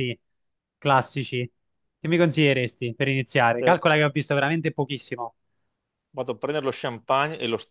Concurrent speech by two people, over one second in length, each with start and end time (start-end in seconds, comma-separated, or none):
none